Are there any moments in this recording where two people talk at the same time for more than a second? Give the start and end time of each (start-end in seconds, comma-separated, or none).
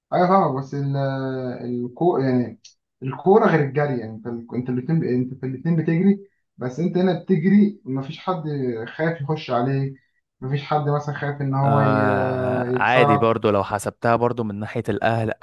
11.6-13.3